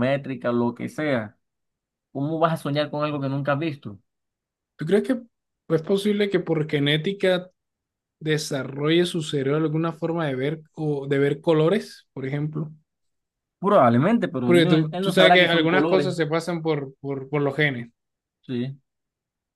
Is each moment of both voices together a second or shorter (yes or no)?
no